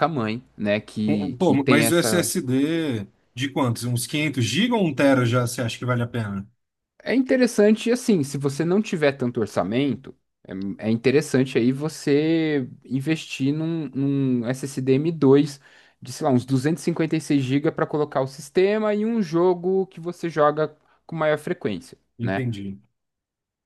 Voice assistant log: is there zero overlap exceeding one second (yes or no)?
no